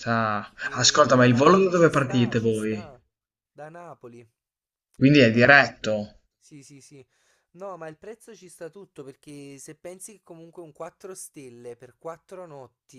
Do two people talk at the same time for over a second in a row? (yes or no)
yes